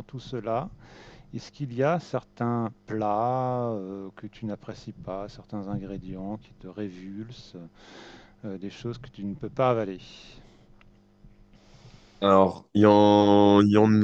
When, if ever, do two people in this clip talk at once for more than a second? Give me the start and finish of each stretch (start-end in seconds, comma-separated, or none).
none